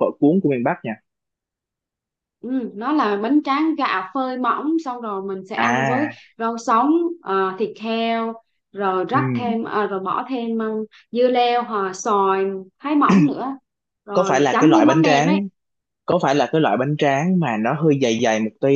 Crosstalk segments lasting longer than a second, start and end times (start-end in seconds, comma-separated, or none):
14.1-15.4